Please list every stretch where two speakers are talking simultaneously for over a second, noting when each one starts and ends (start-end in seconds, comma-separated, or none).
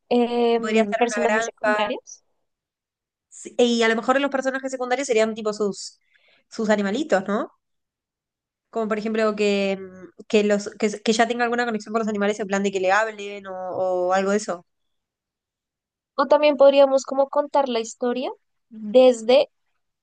0.5-1.9